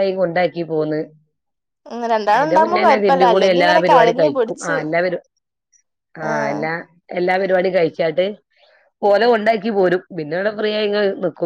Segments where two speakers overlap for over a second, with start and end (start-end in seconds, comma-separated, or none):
2.3-4.8